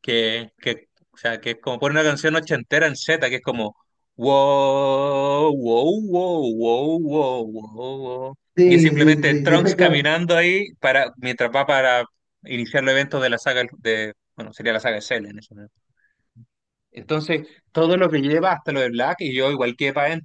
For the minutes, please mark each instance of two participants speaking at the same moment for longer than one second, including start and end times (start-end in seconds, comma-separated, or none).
8.6-10.1